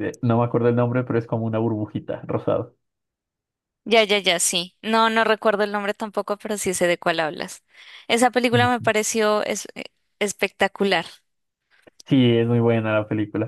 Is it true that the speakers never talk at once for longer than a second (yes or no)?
yes